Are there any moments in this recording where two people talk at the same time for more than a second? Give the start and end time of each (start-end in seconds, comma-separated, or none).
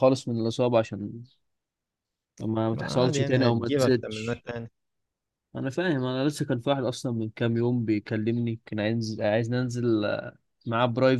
2.7-4.4